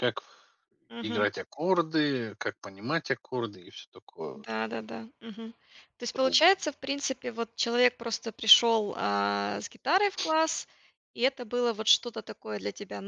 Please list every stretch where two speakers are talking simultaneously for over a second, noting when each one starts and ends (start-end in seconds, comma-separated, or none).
none